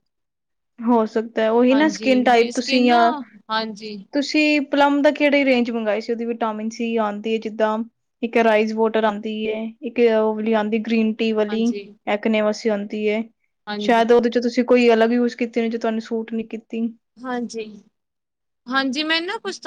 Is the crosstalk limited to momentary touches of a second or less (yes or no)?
no